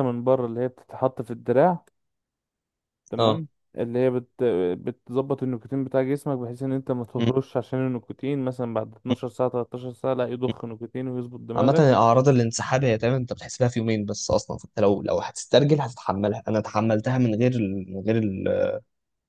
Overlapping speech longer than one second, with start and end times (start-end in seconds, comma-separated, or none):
none